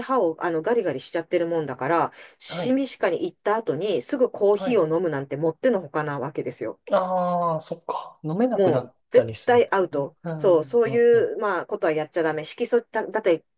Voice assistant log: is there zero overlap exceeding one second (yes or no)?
no